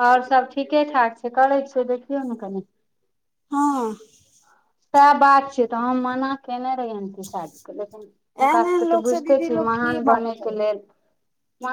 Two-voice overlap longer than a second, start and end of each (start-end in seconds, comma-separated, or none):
8.5-10.6